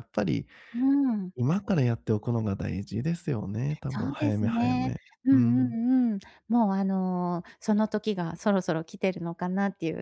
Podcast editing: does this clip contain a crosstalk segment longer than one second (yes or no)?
yes